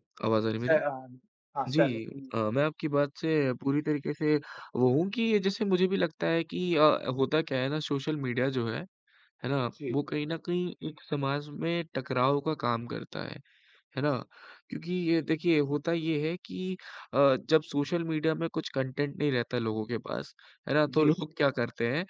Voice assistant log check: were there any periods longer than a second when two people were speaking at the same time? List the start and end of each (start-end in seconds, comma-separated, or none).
none